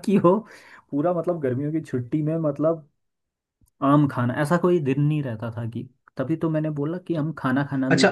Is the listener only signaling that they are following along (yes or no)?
no